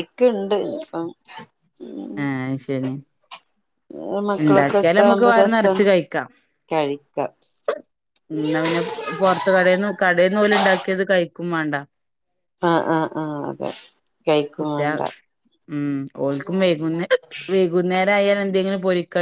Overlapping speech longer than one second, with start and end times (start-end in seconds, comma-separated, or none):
4.5-5.8